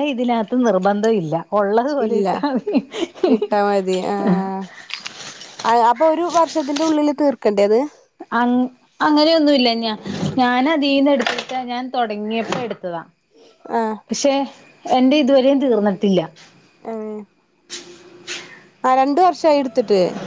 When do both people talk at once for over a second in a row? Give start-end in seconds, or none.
none